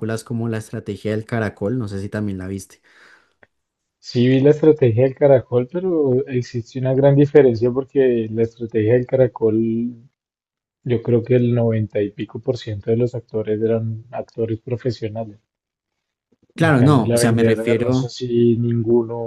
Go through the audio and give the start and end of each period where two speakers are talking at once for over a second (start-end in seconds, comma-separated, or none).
16.6-18.1